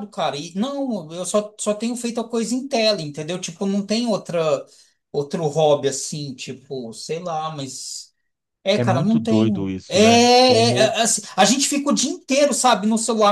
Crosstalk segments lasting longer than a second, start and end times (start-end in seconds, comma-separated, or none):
8.8-11.0